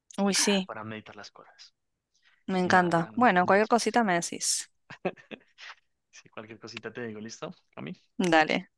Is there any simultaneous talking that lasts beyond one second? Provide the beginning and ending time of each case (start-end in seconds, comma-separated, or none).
2.6-4.0